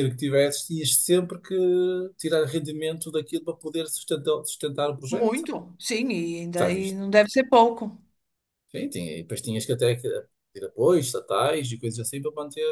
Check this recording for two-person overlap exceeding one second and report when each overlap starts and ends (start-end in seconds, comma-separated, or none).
none